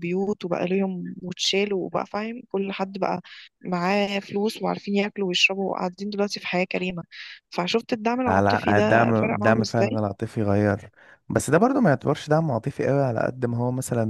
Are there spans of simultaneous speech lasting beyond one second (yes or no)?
yes